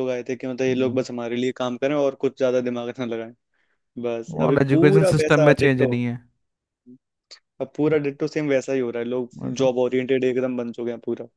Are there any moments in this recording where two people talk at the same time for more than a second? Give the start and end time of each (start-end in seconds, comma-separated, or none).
4.5-6.0